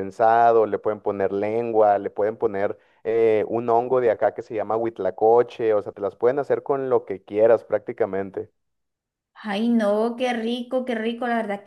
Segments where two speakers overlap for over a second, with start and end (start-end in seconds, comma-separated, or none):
none